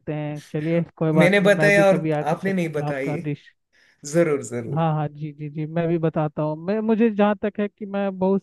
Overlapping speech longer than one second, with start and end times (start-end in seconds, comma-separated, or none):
1.2-3.2